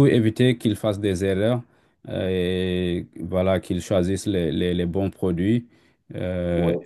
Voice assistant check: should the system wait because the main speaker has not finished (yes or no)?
yes